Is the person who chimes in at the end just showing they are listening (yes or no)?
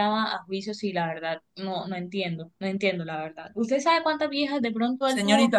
yes